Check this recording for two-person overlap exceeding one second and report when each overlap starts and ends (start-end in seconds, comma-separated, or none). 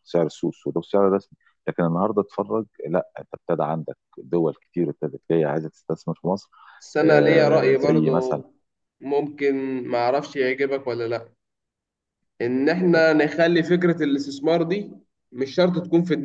7.0-8.4